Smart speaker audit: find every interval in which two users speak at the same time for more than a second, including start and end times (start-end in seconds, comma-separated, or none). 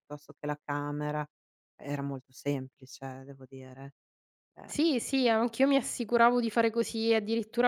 none